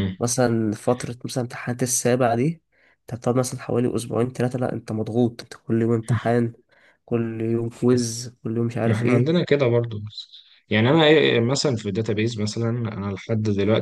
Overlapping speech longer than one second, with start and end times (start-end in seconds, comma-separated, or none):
none